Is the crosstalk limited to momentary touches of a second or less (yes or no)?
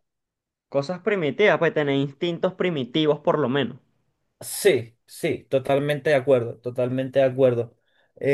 yes